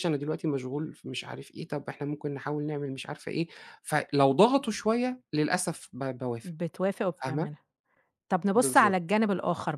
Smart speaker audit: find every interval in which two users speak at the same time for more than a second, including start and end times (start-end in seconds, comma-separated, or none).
none